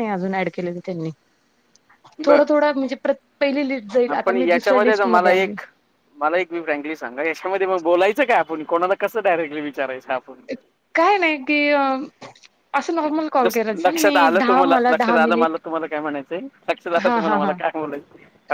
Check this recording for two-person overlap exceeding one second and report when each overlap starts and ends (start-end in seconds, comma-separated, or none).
4.1-5.5, 13.4-15.6